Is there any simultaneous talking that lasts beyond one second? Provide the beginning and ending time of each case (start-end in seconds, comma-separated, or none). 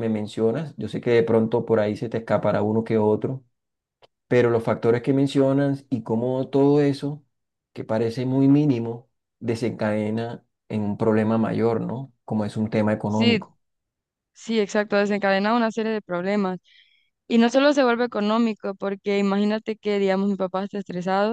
none